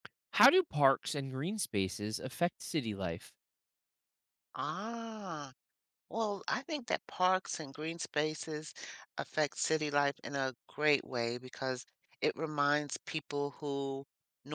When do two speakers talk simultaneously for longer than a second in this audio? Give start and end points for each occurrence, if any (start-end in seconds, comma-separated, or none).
none